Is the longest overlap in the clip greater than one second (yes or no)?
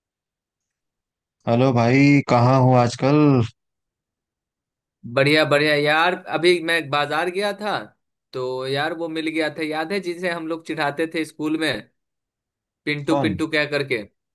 no